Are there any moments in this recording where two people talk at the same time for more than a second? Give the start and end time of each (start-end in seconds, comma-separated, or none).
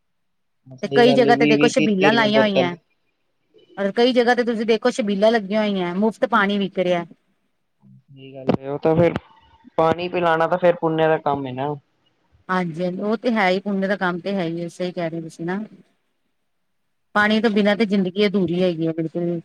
0.8-2.5